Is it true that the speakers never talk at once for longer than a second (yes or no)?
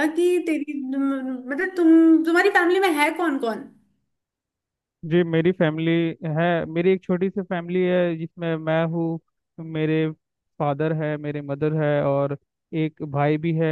yes